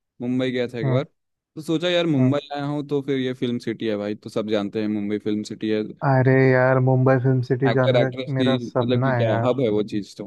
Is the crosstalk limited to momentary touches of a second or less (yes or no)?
no